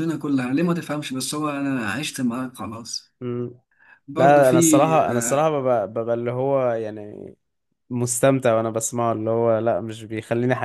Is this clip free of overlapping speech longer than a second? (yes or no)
no